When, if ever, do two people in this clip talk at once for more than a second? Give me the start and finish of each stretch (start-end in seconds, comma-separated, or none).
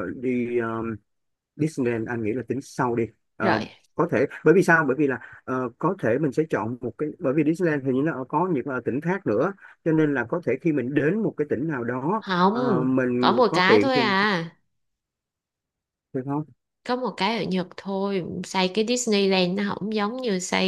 12.2-14.1